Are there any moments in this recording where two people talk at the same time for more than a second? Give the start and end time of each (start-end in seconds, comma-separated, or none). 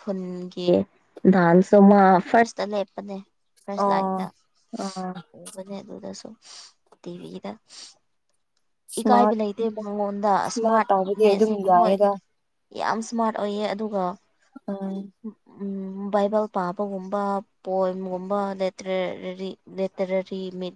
10.5-12.0